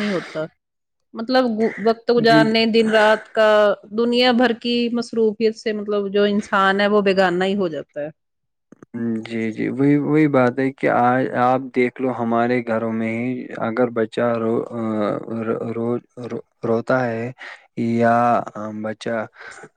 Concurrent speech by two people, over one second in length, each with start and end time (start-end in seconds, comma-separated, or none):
none